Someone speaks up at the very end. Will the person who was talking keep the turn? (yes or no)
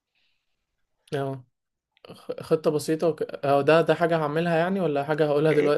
no